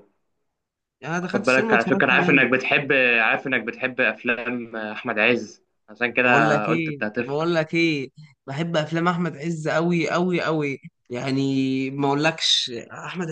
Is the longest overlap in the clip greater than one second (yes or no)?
yes